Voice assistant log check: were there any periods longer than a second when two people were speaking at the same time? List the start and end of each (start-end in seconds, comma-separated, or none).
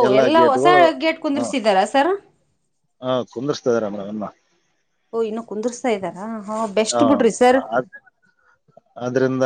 none